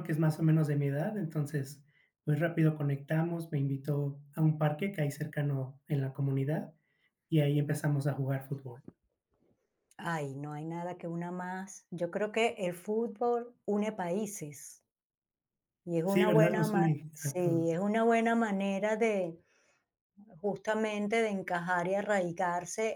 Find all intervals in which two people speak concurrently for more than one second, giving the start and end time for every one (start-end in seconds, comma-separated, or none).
16.0-17.8